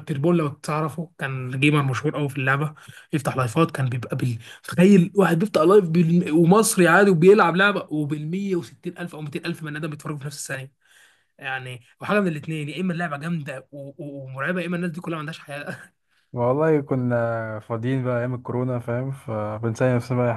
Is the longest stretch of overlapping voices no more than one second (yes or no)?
yes